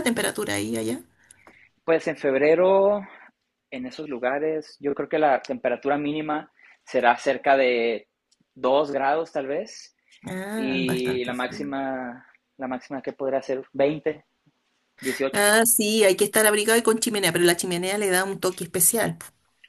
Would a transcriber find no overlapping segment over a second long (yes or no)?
no